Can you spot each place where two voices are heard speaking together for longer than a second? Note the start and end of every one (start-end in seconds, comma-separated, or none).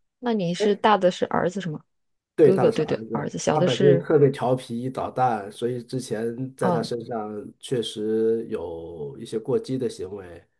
2.4-4.1